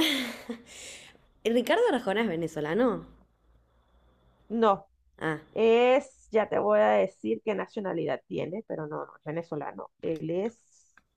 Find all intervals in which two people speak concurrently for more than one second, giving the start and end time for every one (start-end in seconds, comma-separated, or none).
none